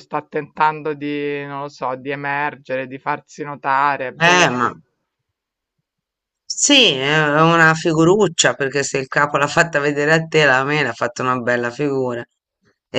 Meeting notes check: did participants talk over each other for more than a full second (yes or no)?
no